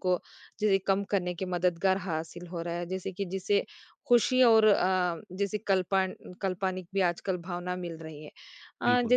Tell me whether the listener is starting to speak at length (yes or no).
no